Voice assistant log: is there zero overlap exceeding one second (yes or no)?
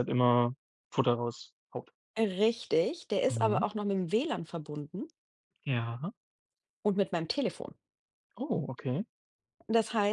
yes